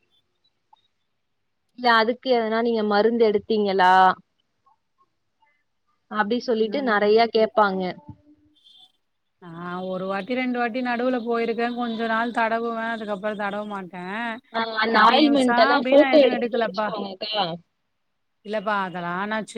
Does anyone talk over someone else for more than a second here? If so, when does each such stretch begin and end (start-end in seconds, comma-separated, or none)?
14.9-16.9